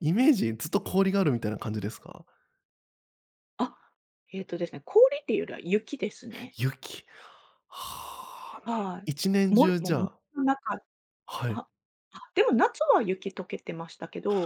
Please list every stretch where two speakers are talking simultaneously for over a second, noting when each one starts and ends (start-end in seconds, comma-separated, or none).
8.6-10.2